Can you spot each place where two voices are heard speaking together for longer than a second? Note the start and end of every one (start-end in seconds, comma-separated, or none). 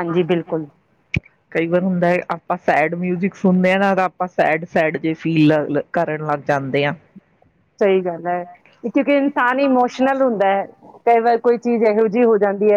none